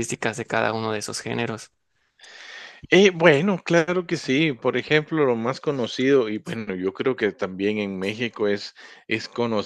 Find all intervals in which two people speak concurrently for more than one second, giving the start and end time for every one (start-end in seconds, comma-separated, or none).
none